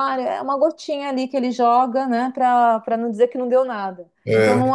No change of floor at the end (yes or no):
yes